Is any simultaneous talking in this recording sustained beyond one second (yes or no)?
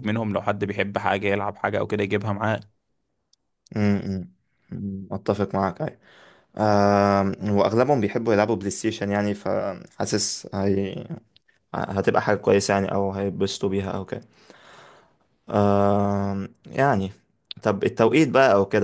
no